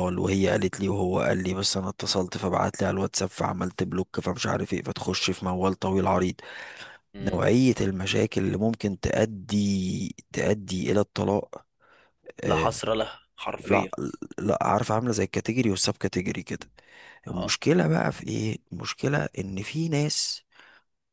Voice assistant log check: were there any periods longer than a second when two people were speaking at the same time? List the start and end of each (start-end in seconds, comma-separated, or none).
none